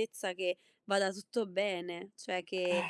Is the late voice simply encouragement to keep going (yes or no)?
yes